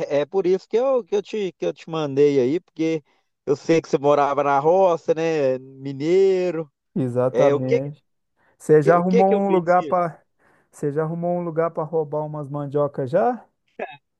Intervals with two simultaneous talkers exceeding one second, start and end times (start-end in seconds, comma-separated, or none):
8.7-10.0